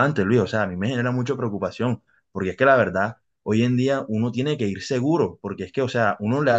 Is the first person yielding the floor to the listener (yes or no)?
no